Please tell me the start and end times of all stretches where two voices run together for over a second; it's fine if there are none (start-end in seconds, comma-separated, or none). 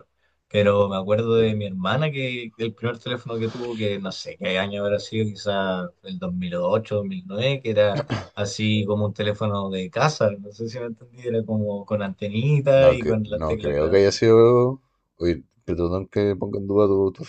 12.7-14.1